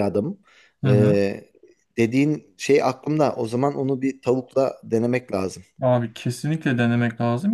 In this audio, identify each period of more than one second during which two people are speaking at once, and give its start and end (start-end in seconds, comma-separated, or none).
none